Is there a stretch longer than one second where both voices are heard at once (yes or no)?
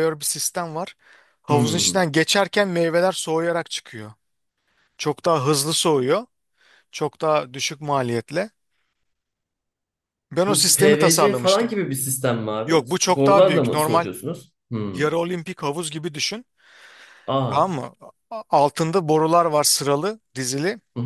yes